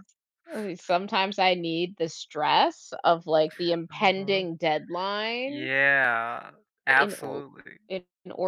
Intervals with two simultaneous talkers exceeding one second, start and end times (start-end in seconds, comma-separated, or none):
none